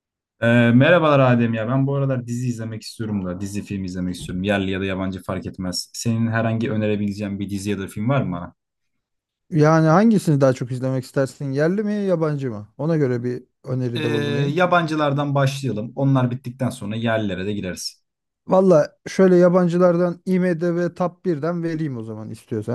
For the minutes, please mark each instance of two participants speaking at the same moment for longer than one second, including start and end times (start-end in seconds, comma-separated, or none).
none